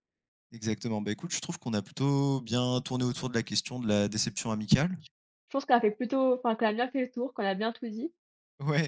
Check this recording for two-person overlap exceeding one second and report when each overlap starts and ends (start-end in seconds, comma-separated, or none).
none